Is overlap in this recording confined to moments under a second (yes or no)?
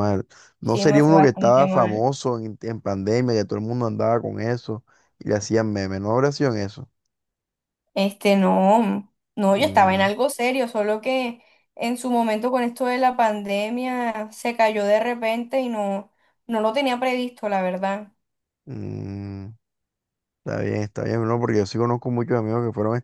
no